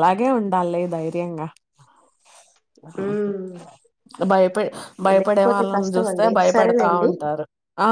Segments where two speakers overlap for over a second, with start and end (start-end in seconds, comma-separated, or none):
5.2-7.1